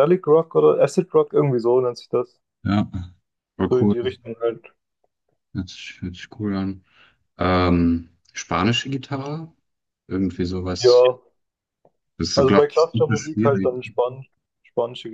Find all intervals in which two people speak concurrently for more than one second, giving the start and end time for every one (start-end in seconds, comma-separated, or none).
12.3-13.8